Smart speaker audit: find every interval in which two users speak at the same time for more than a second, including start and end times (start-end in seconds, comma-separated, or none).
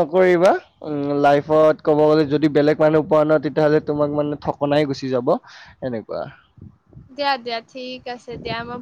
none